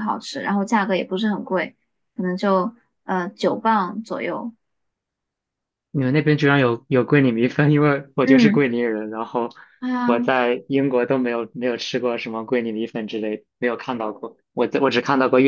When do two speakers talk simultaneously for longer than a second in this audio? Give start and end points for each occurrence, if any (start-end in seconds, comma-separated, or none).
none